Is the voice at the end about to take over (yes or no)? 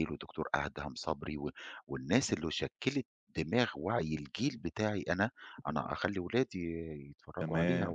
yes